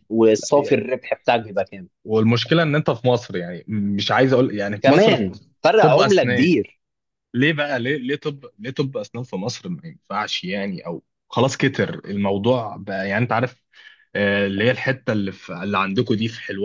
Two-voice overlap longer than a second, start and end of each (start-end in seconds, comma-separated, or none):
4.8-6.5